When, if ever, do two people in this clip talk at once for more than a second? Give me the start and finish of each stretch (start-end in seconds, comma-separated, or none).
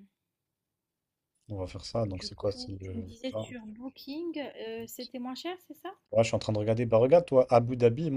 2.1-3.5